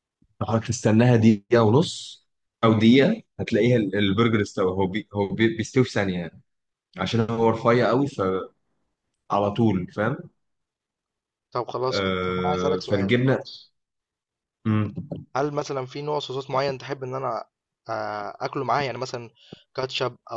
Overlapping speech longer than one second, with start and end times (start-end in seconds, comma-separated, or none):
11.9-13.2